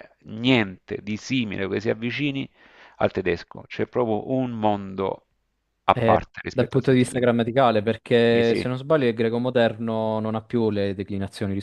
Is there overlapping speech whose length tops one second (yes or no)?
yes